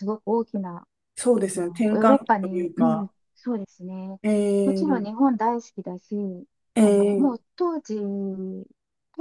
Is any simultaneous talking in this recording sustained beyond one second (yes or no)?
yes